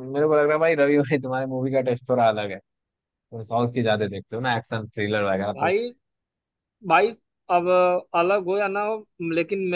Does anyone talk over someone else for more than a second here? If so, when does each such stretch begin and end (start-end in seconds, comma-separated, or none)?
none